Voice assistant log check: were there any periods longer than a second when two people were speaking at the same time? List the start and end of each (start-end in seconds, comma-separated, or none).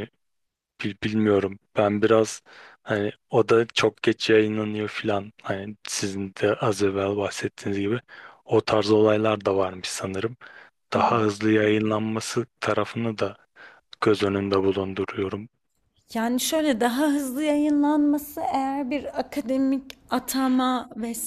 none